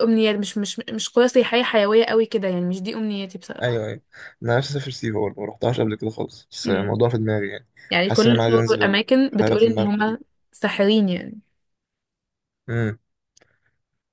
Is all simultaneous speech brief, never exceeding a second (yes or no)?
no